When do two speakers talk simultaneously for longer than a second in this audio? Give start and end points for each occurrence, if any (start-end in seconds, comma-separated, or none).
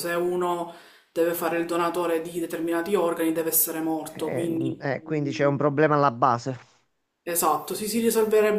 4.1-5.6